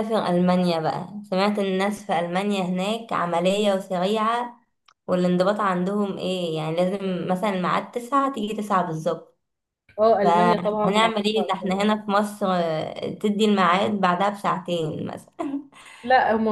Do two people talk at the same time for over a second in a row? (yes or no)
yes